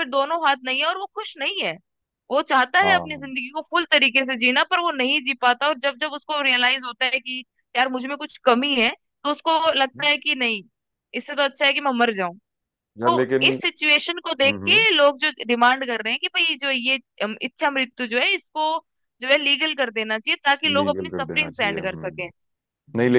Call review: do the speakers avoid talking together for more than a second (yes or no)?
no